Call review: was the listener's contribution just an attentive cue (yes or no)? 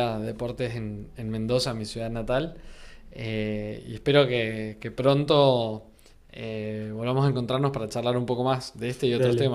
no